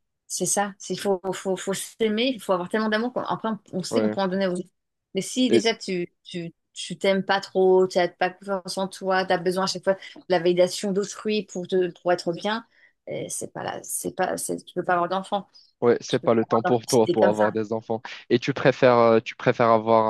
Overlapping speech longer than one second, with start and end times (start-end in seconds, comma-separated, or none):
16.1-17.6